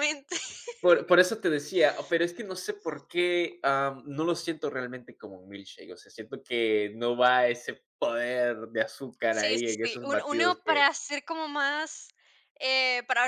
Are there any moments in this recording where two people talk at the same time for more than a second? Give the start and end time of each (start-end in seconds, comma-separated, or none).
9.3-10.9